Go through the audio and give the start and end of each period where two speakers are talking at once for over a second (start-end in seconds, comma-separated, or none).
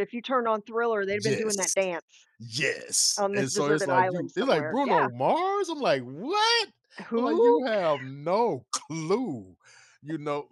3.2-5.0